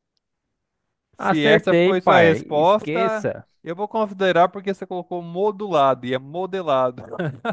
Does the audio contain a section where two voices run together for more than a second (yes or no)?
yes